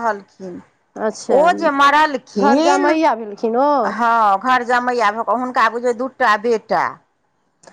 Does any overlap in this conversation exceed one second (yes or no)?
no